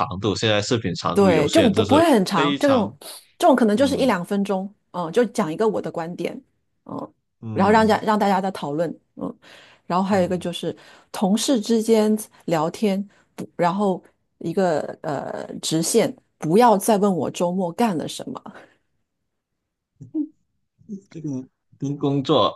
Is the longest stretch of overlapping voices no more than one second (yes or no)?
no